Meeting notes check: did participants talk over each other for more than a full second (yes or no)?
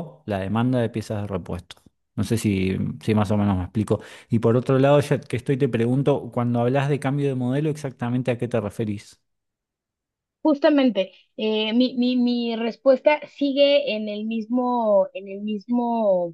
no